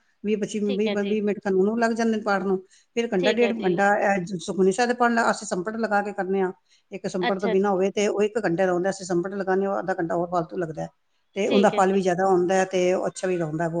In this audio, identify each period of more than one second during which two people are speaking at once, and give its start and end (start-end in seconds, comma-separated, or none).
none